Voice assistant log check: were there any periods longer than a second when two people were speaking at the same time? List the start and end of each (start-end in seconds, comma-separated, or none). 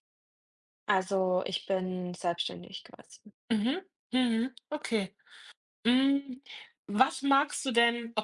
none